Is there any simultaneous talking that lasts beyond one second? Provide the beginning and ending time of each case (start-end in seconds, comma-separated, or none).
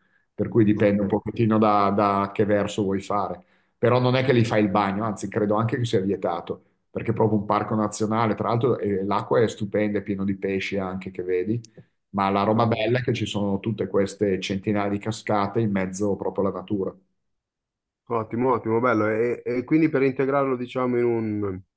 none